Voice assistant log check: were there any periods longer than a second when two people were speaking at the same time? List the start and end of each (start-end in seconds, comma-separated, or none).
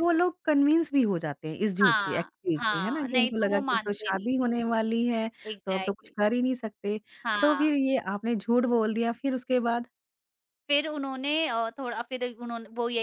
1.8-4.3